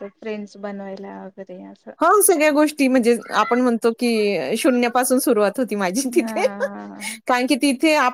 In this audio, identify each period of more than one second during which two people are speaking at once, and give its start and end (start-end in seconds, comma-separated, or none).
none